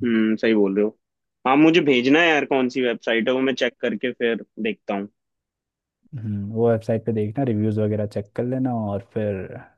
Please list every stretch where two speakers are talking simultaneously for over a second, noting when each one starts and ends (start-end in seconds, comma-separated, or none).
none